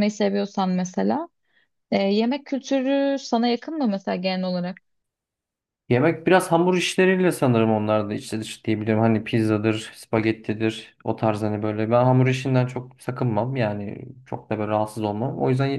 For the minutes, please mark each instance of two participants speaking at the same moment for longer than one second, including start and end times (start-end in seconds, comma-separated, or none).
none